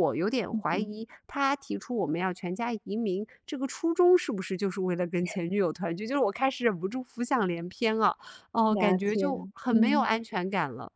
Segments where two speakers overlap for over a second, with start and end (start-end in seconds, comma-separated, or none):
8.7-10.1